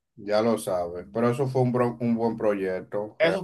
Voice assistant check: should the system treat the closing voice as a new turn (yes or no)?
yes